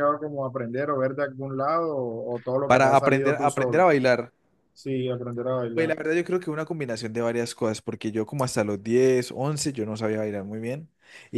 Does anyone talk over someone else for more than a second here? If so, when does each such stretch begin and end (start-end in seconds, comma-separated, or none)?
2.7-3.9